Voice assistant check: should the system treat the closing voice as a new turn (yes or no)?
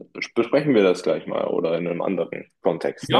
yes